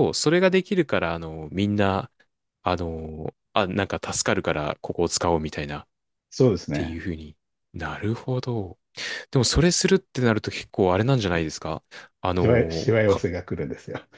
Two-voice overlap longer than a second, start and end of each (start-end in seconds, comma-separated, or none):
none